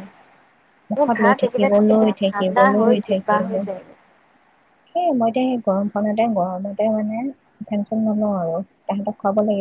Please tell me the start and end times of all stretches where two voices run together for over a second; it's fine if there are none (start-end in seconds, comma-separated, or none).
0.9-3.5